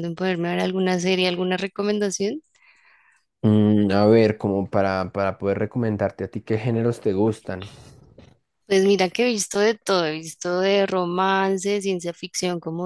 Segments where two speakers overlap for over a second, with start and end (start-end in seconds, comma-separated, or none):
none